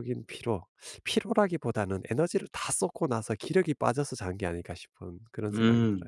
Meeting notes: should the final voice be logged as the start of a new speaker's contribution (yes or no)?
yes